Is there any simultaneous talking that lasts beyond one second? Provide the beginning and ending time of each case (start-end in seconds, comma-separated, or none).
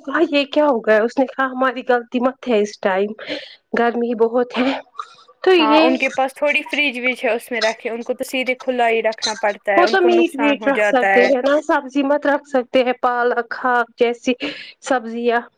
9.8-11.1